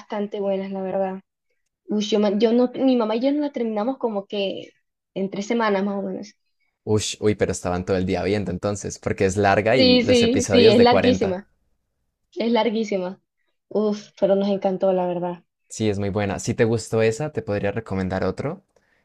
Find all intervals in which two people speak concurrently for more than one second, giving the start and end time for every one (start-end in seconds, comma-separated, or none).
9.7-11.4